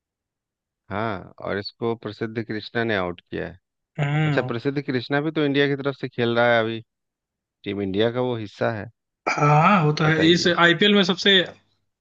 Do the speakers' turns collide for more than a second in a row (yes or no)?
no